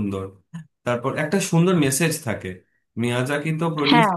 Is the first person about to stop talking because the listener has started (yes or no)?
no